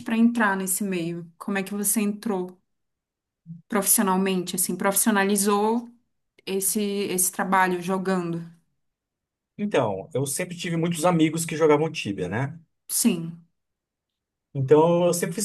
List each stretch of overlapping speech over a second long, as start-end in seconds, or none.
none